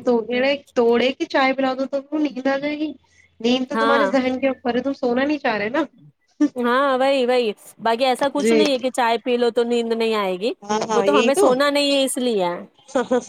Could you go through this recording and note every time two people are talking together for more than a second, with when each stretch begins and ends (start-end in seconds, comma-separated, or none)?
none